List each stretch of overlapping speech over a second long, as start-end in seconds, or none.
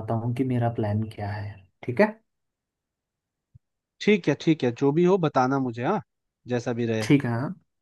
none